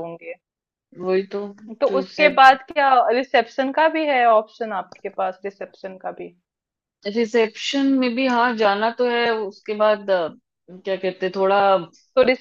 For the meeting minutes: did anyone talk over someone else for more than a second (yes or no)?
no